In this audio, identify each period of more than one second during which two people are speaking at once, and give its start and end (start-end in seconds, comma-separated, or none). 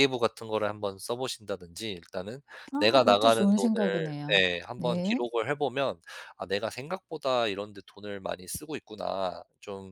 2.8-5.2